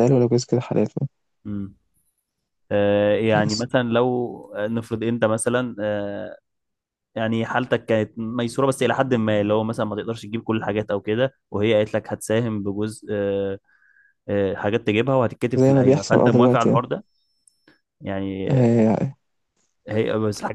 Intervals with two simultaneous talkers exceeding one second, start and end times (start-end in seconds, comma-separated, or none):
15.6-16.9